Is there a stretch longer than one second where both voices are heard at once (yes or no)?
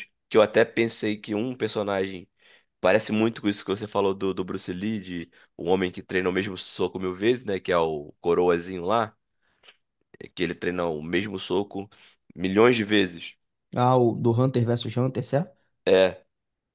no